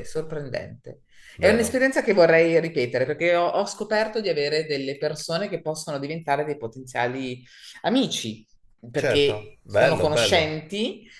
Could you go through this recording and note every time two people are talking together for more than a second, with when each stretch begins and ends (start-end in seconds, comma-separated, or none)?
8.9-10.5